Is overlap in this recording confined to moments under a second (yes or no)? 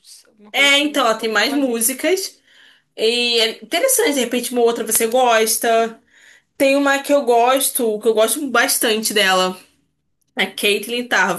no